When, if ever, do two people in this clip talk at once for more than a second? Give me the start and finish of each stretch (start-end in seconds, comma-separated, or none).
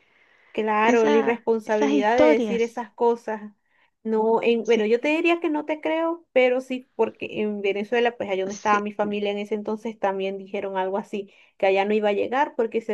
0.8-2.8